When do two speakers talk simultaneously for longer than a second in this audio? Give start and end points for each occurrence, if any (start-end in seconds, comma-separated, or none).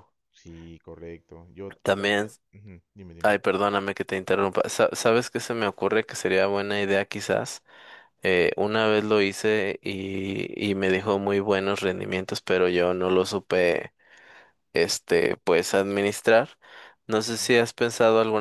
none